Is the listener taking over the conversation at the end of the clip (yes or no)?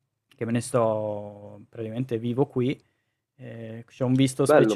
yes